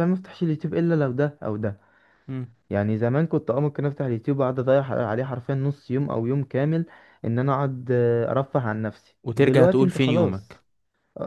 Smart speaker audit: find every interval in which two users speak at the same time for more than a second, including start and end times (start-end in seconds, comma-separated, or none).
9.2-10.6